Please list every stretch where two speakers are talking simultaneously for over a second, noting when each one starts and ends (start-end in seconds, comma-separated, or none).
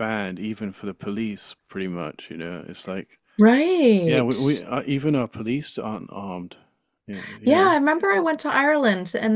none